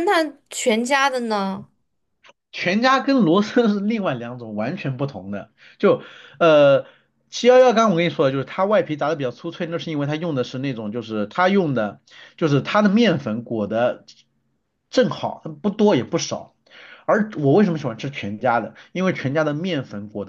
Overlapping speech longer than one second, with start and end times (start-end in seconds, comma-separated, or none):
none